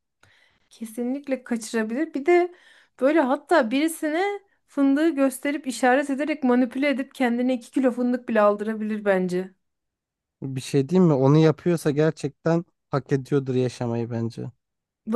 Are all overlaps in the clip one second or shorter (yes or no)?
yes